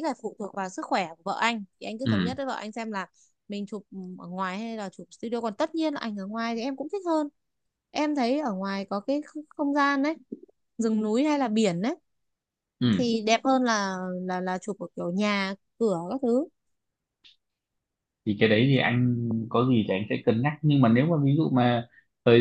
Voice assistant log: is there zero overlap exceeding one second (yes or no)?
yes